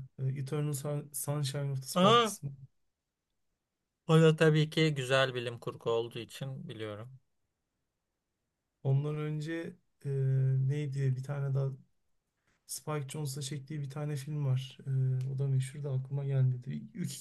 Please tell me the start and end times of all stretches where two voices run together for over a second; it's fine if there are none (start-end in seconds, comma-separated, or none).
none